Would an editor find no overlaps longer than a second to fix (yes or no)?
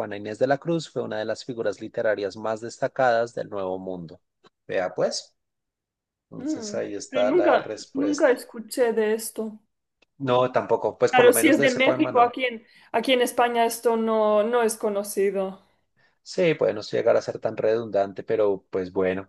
no